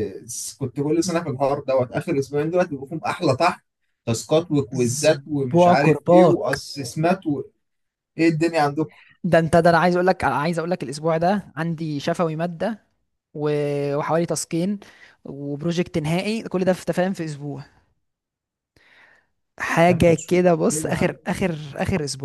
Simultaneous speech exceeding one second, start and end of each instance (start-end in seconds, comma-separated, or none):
4.7-6.6, 19.9-21.1